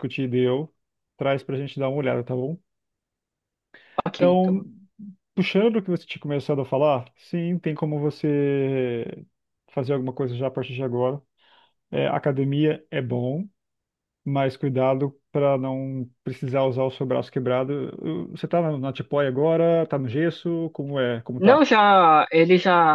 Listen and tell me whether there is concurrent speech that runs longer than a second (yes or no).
no